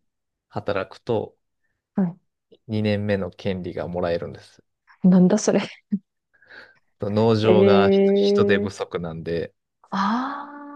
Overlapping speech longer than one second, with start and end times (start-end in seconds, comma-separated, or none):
7.4-8.8